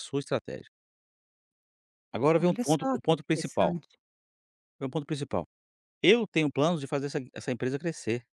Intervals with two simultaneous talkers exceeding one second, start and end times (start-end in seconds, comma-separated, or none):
2.4-3.8